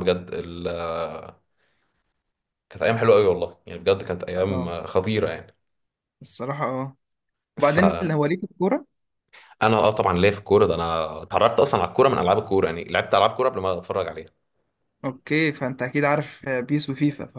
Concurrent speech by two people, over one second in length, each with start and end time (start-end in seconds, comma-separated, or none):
none